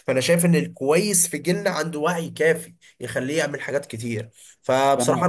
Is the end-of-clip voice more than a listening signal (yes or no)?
no